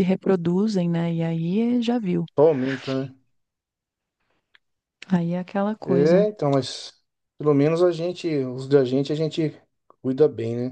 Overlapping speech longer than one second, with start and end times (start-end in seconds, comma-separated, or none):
none